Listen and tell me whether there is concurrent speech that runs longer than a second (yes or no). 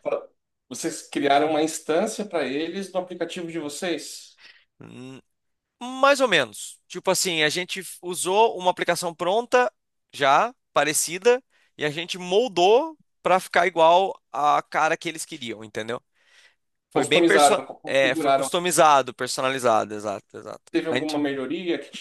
yes